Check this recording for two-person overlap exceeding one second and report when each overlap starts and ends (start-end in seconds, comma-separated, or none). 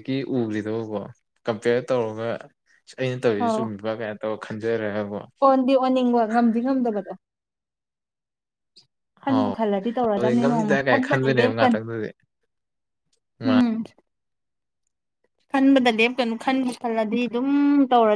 10.2-11.8